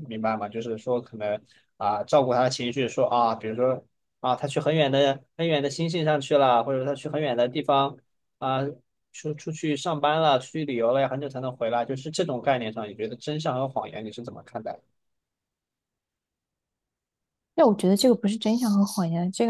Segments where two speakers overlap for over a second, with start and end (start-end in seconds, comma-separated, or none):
none